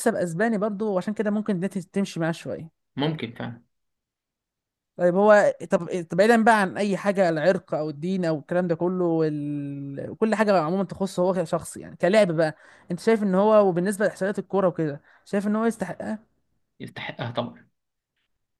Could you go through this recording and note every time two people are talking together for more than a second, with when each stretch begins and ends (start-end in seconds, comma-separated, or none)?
none